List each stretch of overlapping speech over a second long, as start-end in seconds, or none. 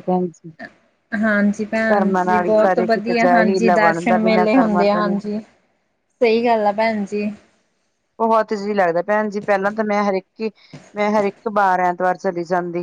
1.9-5.1